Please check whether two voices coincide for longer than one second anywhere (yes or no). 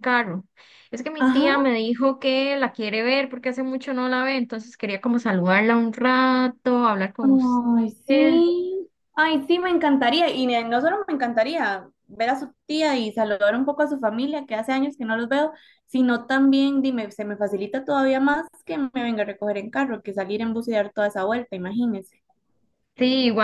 yes